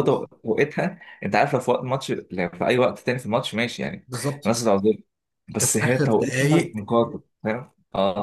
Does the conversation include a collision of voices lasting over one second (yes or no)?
yes